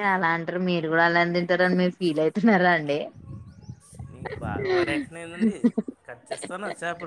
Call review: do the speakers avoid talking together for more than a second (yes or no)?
yes